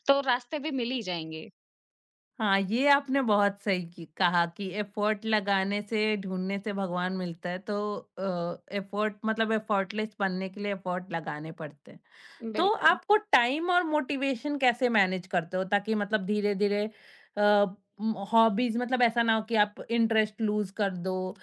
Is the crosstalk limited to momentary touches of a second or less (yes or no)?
yes